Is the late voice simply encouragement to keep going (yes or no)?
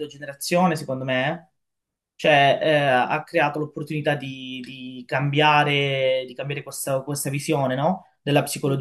yes